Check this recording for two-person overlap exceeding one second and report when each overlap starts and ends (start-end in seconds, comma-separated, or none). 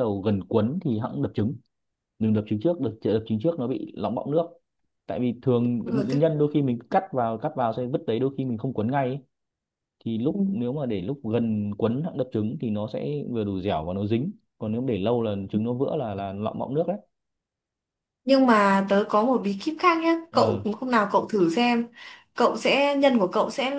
none